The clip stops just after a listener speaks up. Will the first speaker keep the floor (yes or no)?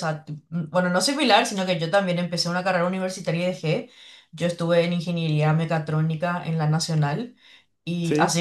yes